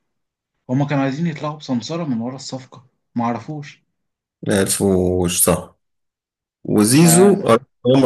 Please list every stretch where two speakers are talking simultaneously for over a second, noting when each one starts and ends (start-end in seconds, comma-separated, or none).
none